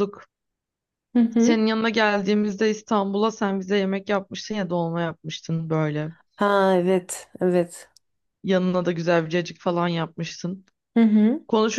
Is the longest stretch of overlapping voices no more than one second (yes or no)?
yes